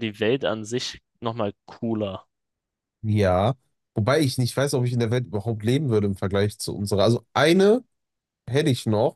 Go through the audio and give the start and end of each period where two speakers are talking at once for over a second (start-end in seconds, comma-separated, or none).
none